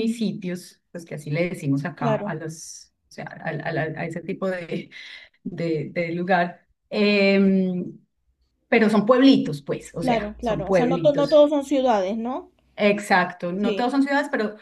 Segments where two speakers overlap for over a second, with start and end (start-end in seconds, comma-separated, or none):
10.0-11.5